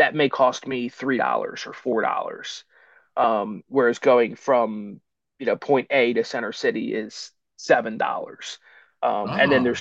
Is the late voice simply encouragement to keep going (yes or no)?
yes